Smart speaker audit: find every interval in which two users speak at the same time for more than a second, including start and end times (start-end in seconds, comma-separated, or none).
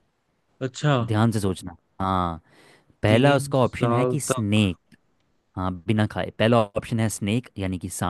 3.1-4.7